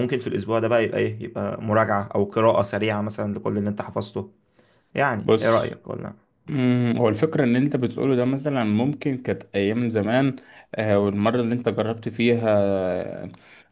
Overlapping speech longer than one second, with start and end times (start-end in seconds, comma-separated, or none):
none